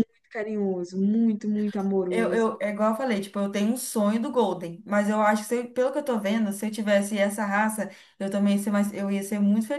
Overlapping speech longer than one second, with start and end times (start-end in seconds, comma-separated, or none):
none